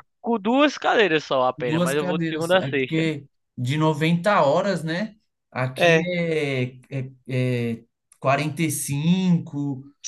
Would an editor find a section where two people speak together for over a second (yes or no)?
yes